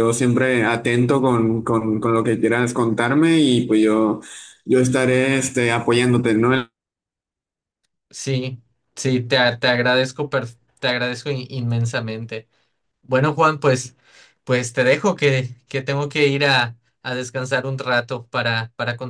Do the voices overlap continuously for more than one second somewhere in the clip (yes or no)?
no